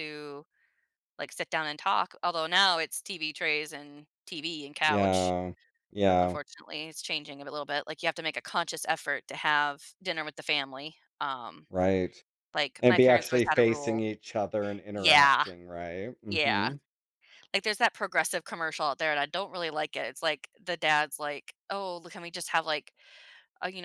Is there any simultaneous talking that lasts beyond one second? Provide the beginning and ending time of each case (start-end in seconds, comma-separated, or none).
12.8-14.0